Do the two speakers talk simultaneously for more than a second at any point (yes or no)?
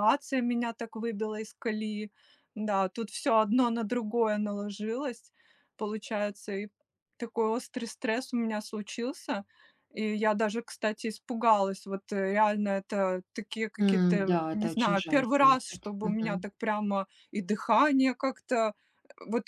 yes